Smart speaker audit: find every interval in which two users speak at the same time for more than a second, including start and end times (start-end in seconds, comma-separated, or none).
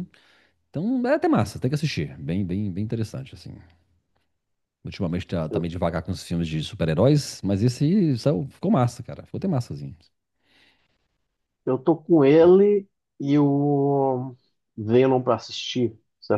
none